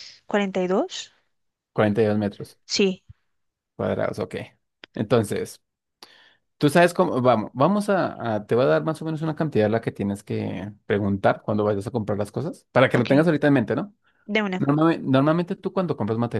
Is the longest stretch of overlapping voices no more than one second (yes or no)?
yes